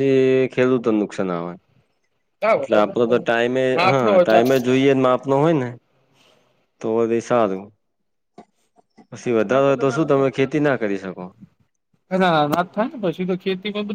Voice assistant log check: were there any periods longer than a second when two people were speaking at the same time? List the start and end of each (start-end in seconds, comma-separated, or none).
2.6-4.4